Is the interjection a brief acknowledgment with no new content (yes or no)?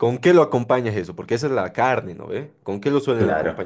no